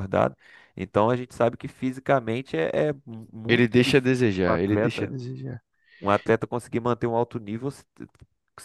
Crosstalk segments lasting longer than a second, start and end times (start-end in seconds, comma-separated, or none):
3.5-5.1